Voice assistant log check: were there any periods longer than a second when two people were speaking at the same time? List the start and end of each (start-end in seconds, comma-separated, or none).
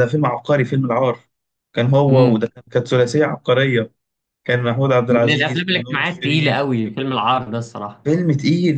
5.1-6.6